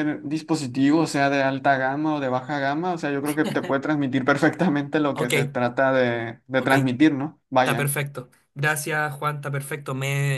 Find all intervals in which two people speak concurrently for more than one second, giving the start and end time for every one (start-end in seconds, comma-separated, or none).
none